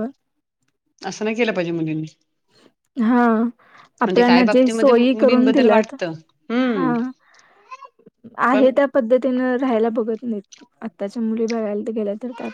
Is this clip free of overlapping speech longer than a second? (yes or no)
no